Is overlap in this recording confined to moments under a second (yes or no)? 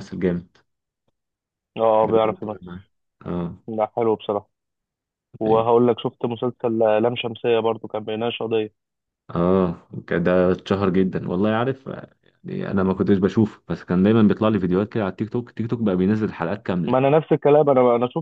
yes